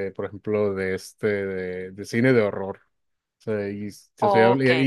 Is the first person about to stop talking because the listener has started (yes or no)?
no